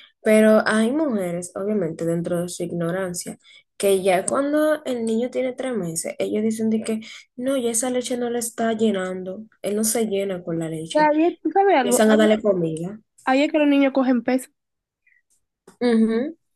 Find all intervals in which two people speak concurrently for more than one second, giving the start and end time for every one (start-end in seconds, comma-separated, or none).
none